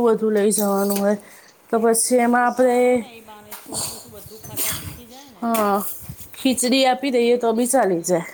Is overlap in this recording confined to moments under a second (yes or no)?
yes